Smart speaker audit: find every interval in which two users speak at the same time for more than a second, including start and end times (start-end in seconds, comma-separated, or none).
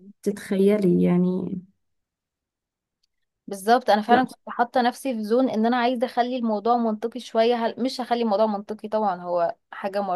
none